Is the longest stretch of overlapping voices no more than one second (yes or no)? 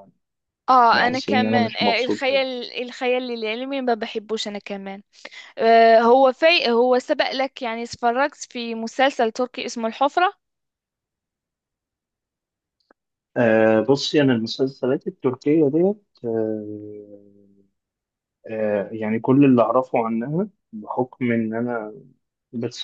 no